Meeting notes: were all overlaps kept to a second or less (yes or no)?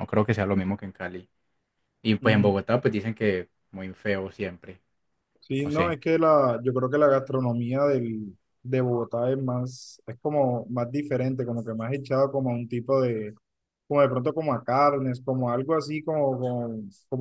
yes